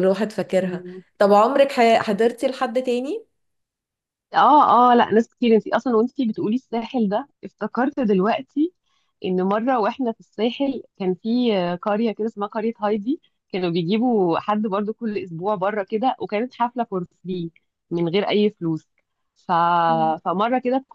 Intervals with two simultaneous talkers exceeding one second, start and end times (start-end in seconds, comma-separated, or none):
none